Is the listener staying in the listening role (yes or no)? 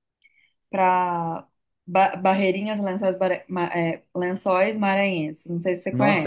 no